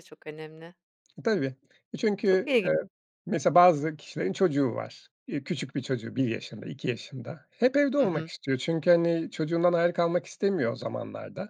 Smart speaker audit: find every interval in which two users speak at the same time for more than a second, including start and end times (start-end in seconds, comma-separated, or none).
none